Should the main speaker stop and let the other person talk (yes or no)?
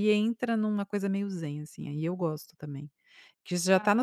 no